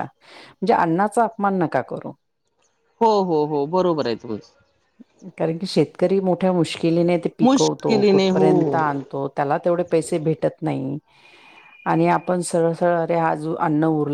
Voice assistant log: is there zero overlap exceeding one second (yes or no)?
no